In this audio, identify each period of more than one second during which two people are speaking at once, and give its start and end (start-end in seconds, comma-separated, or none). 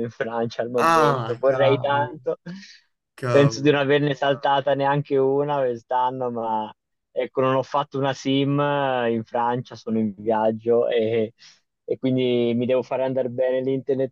0.8-2.2